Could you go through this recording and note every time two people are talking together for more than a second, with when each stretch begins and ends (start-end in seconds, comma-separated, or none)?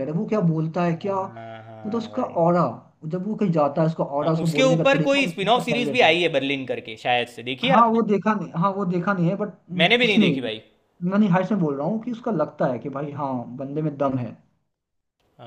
4.2-6.2